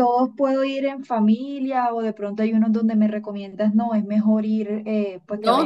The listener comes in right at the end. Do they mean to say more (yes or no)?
yes